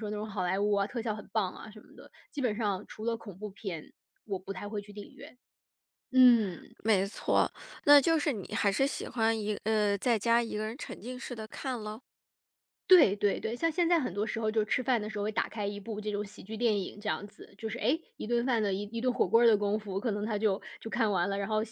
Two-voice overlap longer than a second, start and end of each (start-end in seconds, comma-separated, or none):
none